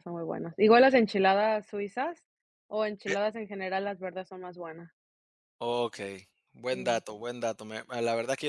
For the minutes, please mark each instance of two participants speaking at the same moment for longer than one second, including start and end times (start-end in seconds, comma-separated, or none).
none